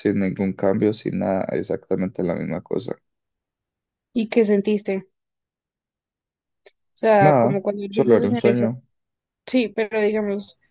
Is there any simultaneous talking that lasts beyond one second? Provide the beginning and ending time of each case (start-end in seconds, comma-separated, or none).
7.2-8.7